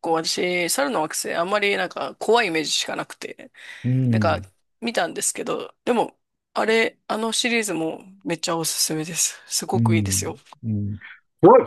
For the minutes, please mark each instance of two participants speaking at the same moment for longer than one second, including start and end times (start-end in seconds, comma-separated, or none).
none